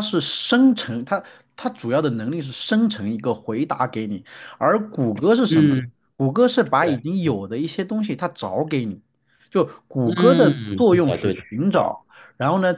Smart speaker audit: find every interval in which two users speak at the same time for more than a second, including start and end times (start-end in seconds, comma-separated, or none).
10.0-12.0